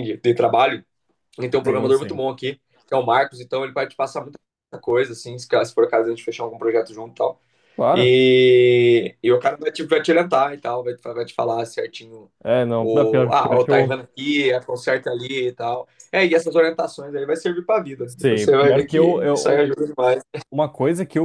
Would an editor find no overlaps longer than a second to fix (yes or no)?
no